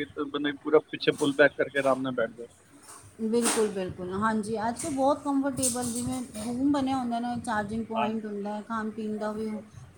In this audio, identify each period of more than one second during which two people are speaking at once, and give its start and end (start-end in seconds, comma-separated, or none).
none